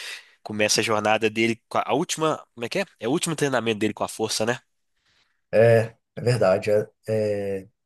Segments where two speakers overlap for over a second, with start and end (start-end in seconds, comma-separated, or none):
none